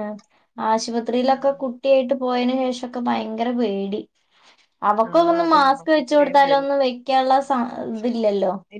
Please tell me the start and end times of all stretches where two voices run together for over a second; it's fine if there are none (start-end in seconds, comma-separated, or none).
5.1-6.7